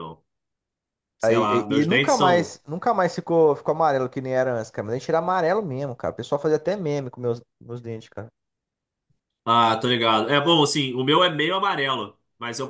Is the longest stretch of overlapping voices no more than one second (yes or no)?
no